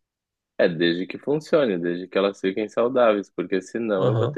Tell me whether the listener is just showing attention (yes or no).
yes